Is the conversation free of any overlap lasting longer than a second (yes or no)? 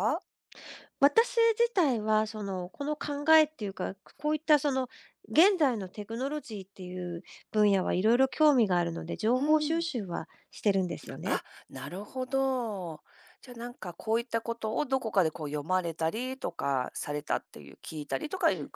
yes